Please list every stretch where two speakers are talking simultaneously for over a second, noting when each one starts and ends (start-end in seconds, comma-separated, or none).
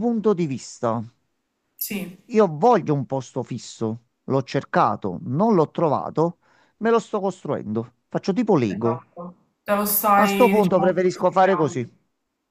10.2-11.9